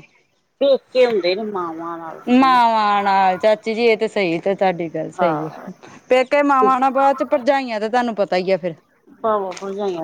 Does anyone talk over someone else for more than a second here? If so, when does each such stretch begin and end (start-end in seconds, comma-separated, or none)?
none